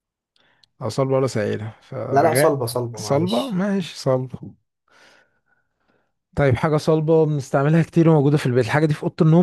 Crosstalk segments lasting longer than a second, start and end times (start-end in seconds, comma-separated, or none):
2.1-3.6